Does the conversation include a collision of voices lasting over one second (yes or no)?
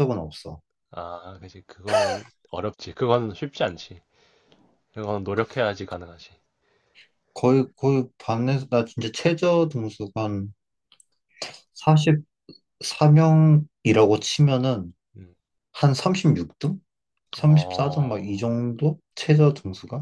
yes